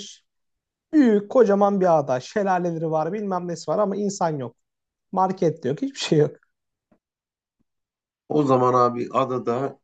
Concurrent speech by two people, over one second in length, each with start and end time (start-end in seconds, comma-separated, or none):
none